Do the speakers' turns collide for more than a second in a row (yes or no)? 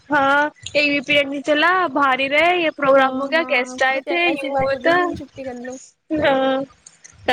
yes